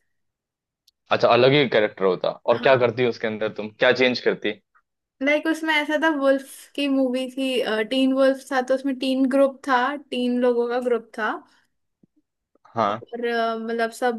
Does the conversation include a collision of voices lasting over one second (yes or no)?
no